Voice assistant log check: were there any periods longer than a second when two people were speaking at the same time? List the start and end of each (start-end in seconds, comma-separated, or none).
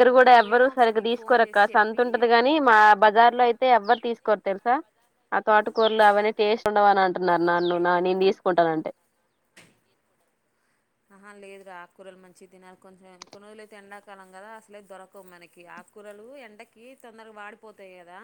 0.5-2.1